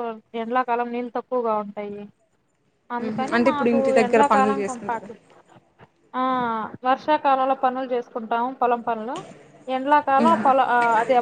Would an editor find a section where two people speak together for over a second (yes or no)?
yes